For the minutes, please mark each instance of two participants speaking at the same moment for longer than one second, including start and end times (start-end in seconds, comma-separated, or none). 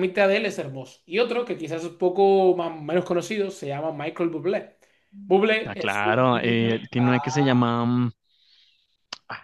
5.7-7.7